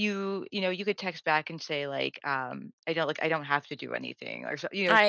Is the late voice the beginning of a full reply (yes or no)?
no